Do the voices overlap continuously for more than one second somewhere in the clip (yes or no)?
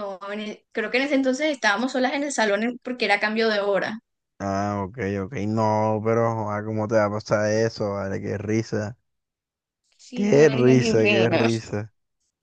yes